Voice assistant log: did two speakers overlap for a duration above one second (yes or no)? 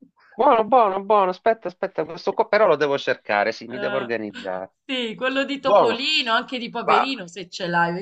no